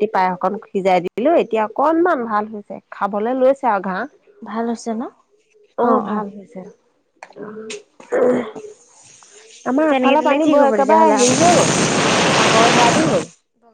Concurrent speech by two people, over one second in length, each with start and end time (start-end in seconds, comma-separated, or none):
9.9-11.5